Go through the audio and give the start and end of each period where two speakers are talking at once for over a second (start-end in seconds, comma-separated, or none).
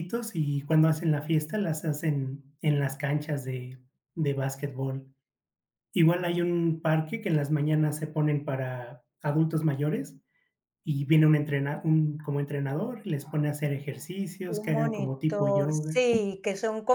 14.4-16.0